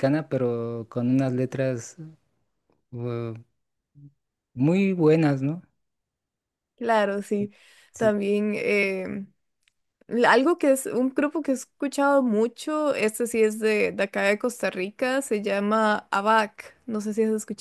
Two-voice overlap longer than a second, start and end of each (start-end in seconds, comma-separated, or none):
none